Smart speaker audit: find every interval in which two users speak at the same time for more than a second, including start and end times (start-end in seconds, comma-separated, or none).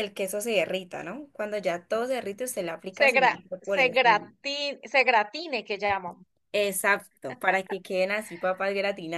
2.9-4.3